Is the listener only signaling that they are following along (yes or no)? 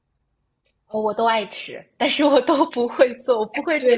no